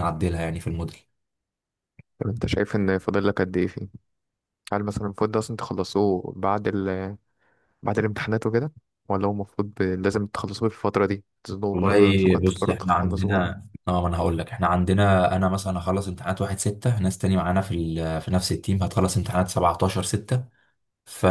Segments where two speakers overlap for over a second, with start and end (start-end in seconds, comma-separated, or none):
11.7-13.5